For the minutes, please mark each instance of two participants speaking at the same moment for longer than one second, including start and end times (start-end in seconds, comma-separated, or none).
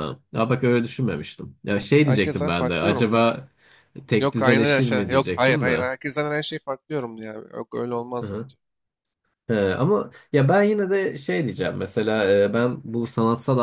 2.0-3.2, 4.2-5.9